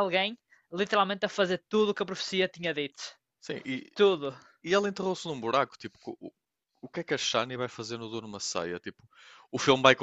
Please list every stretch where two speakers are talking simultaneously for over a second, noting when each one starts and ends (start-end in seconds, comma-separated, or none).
none